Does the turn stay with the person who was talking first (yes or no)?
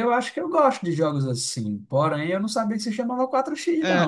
no